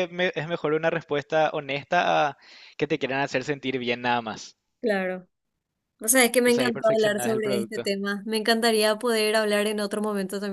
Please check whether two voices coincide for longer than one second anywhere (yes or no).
yes